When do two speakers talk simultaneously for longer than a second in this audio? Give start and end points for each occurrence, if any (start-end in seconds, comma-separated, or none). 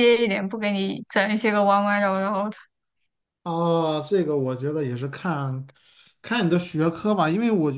none